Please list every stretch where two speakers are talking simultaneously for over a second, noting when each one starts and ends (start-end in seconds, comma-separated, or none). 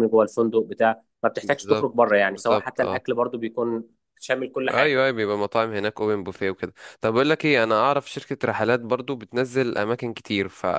1.4-3.0